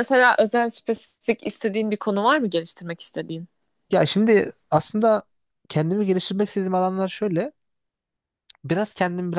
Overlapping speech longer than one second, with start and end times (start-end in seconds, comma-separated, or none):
none